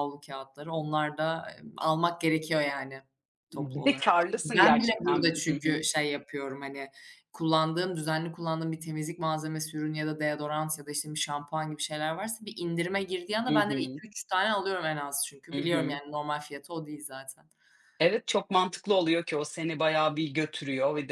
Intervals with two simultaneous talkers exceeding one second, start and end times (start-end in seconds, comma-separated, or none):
3.5-5.8